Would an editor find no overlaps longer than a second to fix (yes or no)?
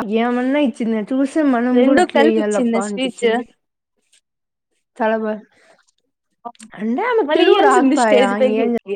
no